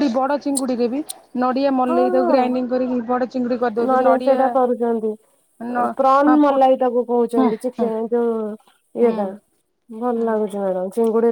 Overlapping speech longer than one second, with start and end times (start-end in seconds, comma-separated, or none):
none